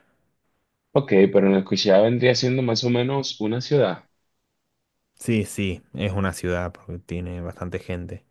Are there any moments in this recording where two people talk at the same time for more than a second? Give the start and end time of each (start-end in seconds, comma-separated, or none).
none